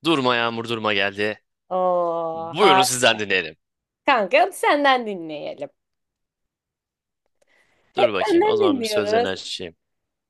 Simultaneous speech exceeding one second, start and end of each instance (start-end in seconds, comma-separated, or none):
8.0-9.3